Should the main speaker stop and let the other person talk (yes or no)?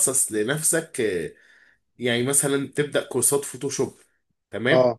no